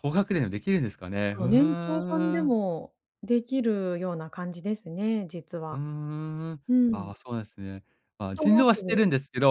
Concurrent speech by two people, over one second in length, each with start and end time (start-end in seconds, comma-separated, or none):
1.3-2.5